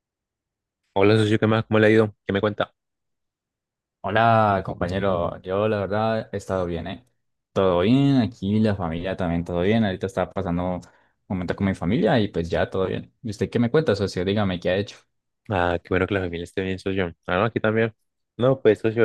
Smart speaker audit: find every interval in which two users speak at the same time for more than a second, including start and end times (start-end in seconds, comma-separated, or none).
none